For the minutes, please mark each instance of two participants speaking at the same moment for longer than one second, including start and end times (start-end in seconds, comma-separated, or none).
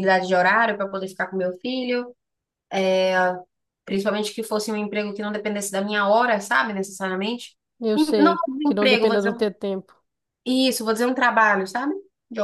7.9-9.4